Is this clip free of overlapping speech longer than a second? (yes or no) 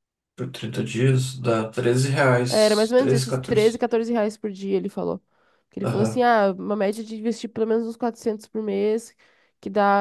no